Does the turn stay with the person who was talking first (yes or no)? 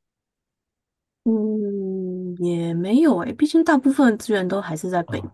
no